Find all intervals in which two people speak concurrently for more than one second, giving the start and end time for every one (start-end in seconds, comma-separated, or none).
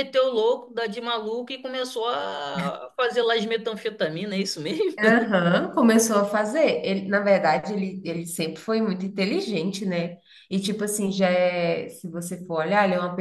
none